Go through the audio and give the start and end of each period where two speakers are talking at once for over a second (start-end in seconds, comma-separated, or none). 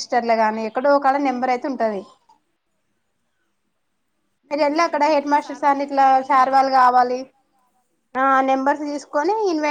4.8-6.7